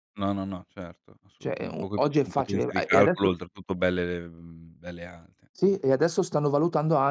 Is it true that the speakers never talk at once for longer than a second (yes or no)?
no